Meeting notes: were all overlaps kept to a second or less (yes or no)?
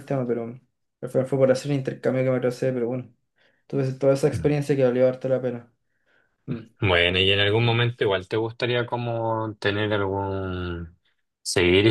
yes